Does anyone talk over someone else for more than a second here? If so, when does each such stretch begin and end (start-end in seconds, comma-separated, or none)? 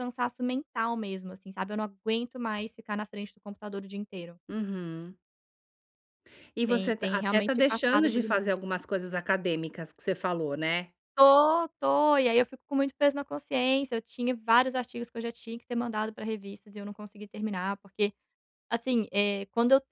6.7-8.6